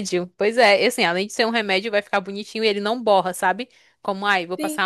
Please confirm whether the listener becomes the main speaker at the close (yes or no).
no